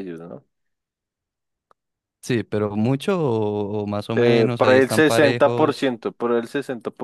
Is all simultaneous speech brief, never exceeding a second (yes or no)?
no